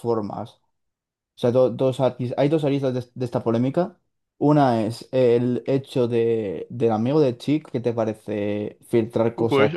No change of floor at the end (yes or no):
no